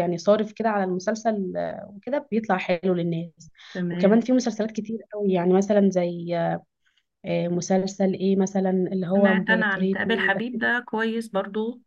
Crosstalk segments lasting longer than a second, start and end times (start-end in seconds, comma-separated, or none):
9.1-10.6